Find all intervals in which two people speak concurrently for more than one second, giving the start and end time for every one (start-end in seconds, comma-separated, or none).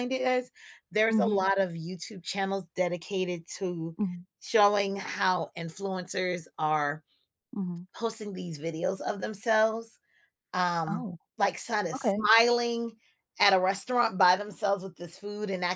none